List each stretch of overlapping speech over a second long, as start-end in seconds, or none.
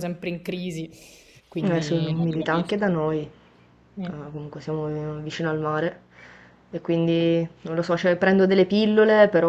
1.6-2.9